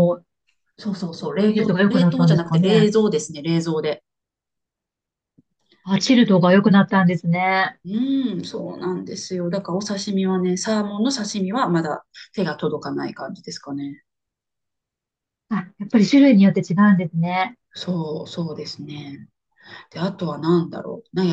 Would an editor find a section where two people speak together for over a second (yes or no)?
yes